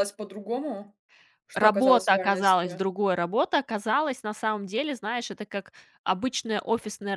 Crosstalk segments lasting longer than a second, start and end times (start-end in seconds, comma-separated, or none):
1.5-2.8